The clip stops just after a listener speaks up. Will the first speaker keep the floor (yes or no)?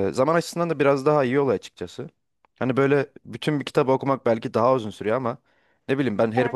yes